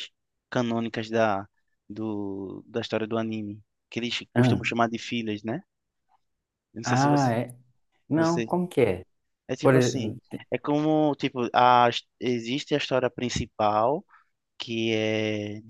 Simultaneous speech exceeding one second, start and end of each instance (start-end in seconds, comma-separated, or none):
none